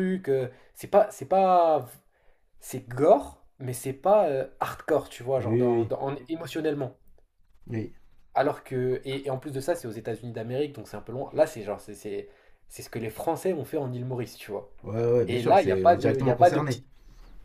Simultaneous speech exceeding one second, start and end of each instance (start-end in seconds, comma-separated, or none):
15.3-16.8